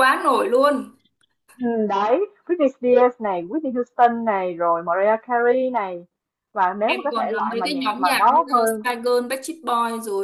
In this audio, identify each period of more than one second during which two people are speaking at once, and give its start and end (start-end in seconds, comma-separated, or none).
6.8-8.8